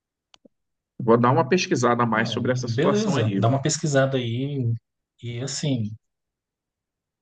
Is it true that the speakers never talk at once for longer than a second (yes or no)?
no